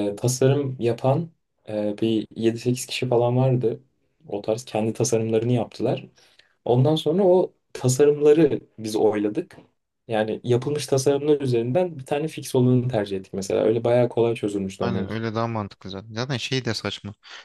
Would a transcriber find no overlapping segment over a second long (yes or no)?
yes